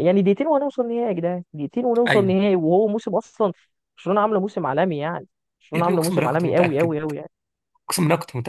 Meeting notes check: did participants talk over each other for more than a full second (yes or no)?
yes